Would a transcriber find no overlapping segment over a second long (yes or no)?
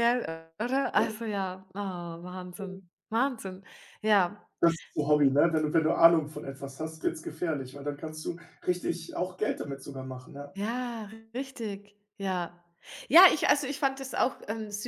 yes